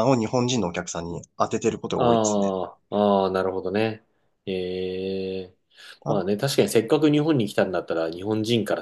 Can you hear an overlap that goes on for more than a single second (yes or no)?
no